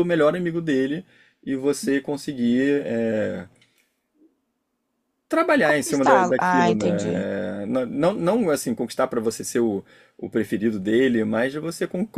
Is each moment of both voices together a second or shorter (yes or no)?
no